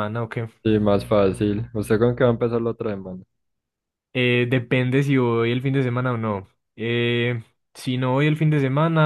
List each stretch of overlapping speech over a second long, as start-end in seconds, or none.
none